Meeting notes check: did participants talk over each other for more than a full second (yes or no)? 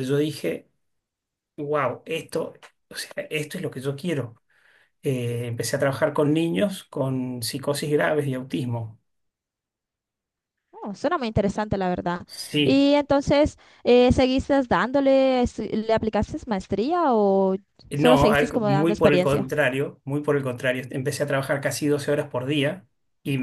yes